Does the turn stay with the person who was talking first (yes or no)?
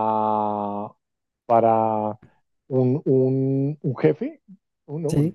yes